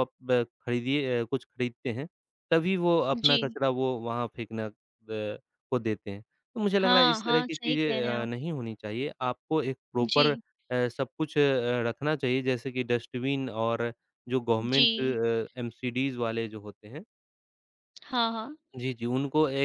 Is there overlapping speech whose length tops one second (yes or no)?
yes